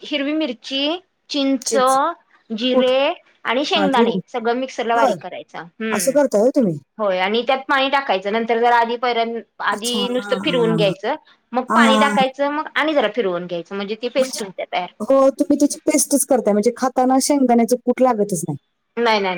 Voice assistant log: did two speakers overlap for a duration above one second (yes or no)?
yes